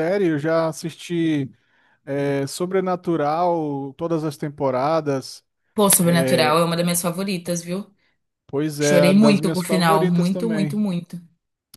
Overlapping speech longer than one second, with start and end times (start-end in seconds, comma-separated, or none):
8.8-10.8